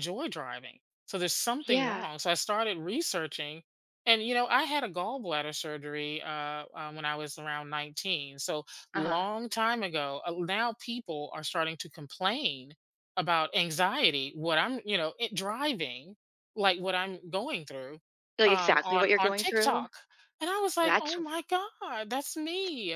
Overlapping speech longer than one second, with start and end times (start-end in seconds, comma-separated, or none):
18.4-19.9